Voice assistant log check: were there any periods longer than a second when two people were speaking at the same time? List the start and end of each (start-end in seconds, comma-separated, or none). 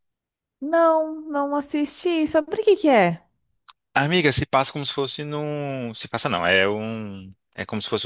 none